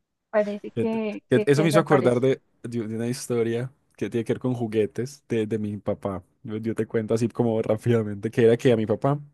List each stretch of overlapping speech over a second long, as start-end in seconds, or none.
0.8-2.3